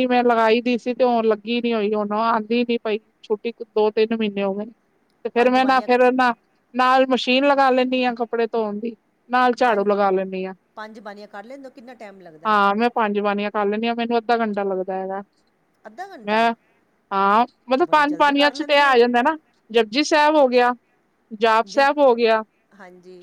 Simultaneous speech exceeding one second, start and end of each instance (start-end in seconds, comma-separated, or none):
17.8-19.0